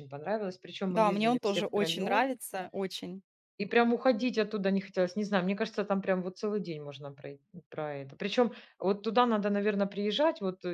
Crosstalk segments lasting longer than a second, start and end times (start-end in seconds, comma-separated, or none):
0.9-2.2